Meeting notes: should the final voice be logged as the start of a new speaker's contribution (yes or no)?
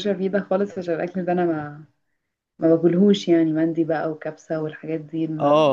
yes